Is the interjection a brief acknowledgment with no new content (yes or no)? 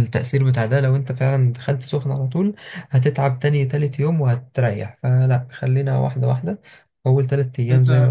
no